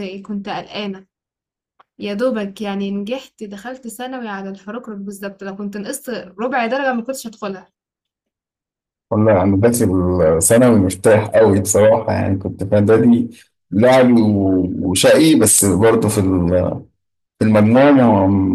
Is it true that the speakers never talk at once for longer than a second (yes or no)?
yes